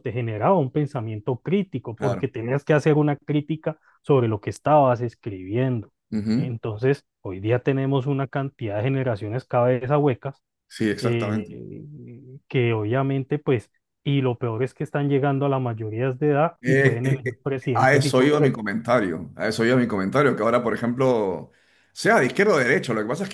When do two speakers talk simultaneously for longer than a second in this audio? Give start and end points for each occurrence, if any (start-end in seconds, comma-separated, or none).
16.6-18.6